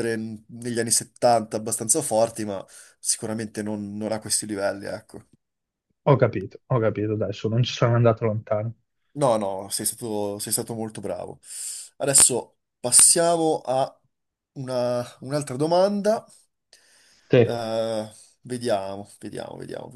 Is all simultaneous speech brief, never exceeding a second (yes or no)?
yes